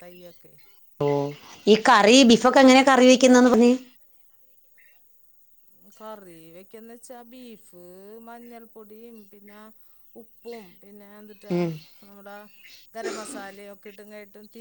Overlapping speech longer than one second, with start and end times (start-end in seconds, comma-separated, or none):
none